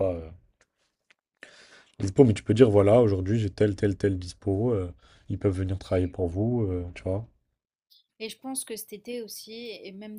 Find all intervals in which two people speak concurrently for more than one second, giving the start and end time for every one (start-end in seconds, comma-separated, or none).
none